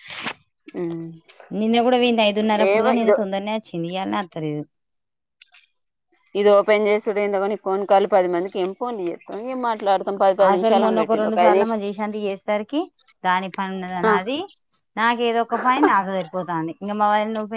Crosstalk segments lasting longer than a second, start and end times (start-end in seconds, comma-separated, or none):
none